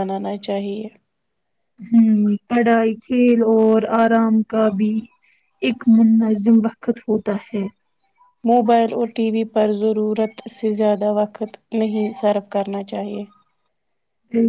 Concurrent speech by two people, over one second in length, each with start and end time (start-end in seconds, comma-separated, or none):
none